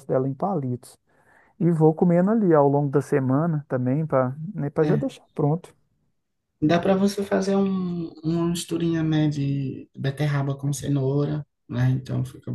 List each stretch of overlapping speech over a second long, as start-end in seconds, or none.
none